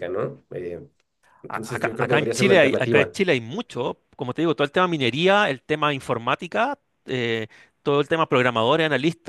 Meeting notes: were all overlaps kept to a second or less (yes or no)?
no